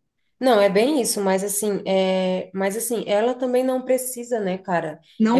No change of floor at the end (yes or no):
yes